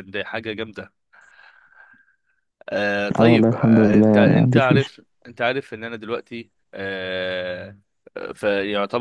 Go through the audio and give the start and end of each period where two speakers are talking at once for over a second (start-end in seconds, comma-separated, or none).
3.2-4.9